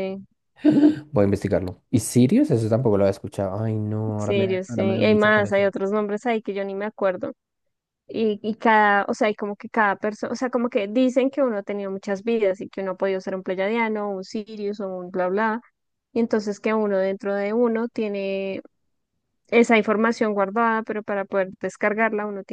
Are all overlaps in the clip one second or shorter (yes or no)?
no